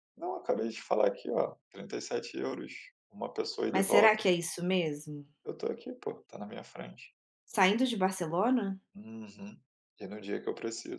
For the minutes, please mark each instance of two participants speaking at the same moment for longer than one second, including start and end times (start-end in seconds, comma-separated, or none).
none